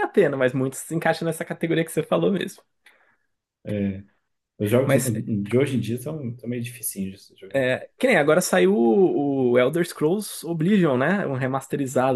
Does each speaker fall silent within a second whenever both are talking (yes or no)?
yes